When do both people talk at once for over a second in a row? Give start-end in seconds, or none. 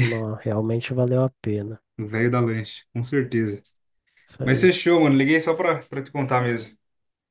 none